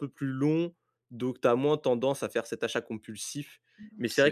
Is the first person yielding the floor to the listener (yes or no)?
no